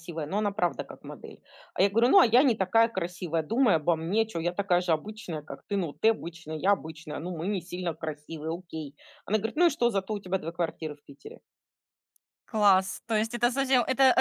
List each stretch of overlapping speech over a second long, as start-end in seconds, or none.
none